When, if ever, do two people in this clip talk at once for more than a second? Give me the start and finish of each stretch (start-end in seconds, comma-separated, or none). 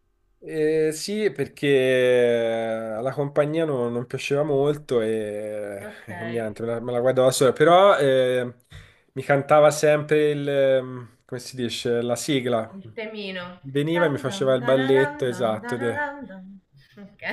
14.0-16.1